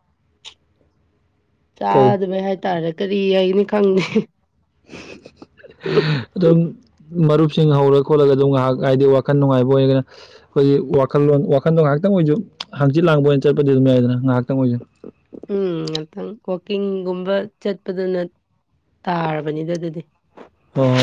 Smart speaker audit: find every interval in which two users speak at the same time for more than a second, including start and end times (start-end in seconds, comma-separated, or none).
none